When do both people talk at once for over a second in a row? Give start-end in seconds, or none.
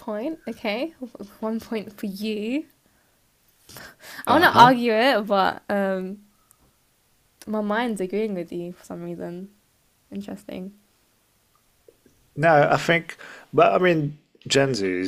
none